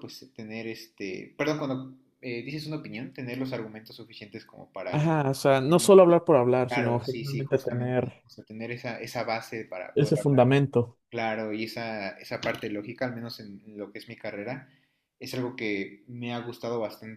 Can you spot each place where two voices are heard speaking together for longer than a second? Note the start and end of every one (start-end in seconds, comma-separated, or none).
6.7-8.1